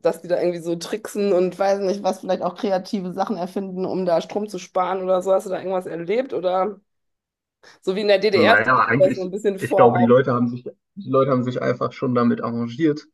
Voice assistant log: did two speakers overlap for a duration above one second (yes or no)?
yes